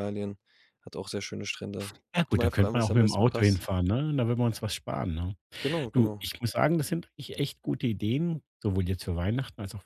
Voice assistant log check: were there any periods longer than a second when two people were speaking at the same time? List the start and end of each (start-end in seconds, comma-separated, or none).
2.1-3.6